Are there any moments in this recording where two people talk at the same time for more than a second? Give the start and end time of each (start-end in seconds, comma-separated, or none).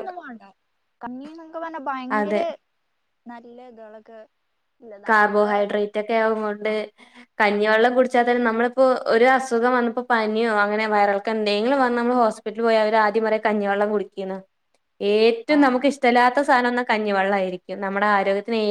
none